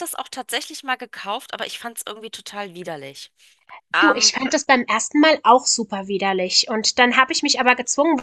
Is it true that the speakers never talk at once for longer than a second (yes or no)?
yes